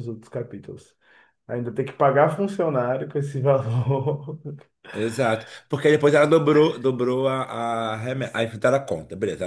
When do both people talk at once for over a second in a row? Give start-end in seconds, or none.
none